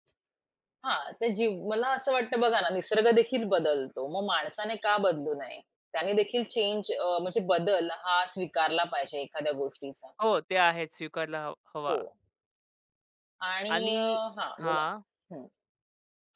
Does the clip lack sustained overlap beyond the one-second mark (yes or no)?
yes